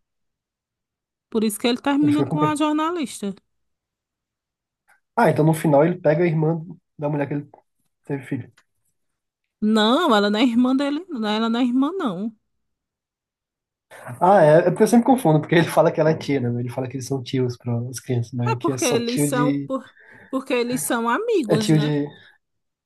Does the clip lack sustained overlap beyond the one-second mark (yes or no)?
no